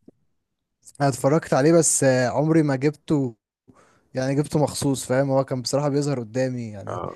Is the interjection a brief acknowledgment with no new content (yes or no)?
yes